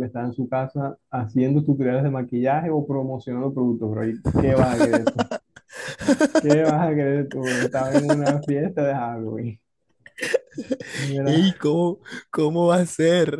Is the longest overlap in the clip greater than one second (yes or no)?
no